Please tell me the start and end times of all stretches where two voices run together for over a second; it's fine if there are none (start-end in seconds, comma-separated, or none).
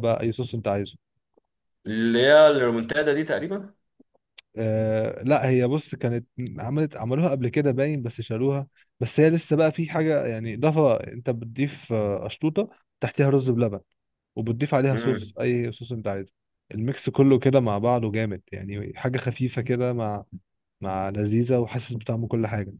none